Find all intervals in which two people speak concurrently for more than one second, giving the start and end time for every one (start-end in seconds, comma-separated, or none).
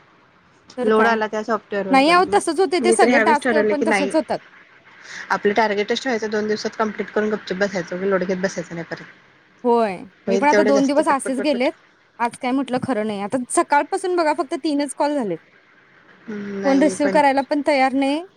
1.9-4.1, 10.3-11.7